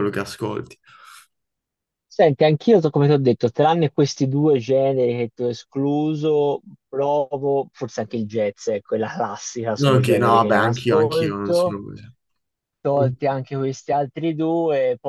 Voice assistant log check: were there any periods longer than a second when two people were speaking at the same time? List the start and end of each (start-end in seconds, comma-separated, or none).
9.8-11.8